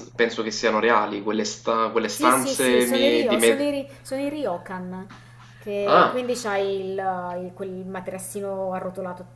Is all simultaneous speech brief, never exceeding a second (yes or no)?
no